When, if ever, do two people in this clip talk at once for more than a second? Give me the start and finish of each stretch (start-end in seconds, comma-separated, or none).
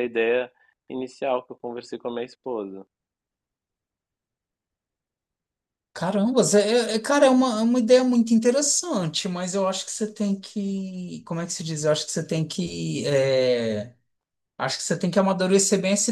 none